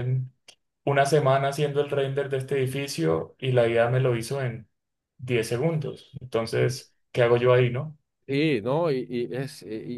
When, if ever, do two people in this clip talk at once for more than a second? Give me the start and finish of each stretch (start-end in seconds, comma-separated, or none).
none